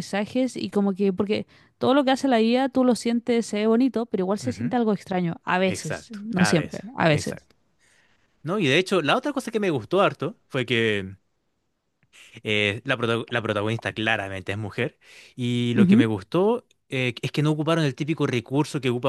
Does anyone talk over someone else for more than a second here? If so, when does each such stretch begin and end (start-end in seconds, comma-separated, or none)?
5.7-7.5